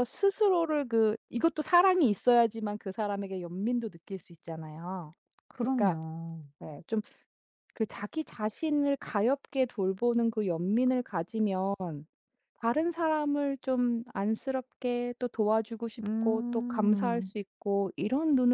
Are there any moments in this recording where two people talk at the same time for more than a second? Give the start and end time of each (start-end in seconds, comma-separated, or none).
16.0-17.3